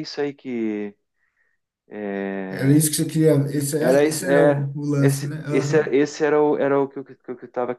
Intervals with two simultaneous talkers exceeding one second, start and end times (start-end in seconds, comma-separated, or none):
3.8-5.9